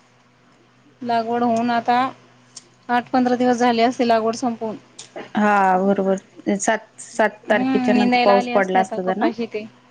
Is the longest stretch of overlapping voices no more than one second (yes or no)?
no